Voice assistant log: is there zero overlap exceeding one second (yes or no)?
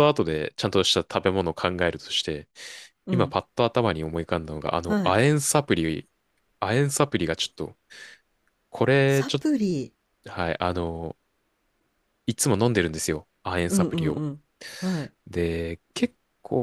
yes